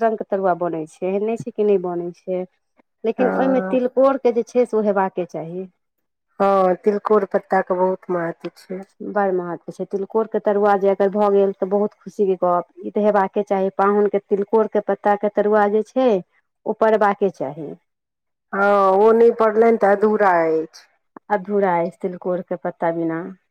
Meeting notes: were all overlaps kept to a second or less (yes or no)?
yes